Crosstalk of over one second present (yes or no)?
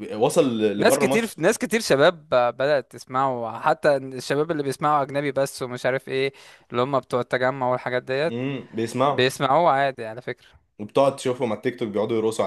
no